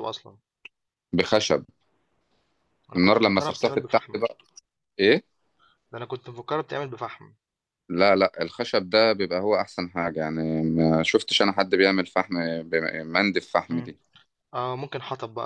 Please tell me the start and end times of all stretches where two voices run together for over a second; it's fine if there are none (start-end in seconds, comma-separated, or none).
3.0-4.2